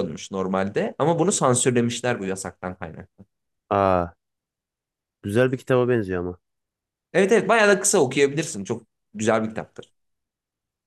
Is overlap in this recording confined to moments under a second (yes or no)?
yes